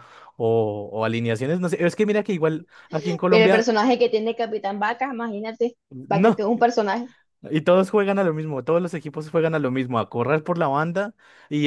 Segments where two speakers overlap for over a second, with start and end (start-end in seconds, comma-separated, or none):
none